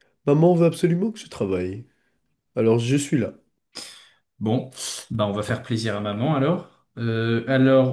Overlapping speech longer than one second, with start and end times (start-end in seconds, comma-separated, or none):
none